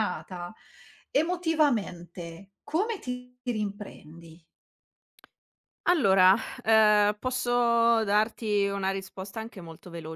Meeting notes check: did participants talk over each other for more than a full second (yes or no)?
no